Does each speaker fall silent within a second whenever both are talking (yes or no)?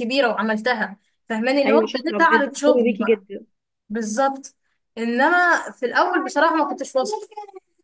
no